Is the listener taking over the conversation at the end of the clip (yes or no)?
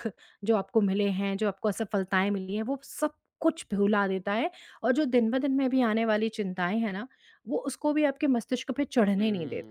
yes